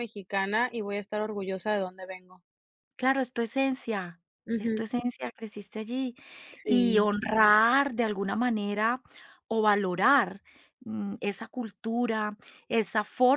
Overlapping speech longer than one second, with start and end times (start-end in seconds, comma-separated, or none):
none